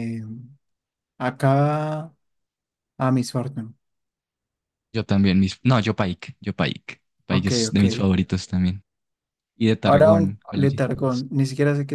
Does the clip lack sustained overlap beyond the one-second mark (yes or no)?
no